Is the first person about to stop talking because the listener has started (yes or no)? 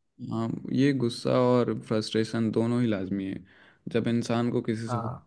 no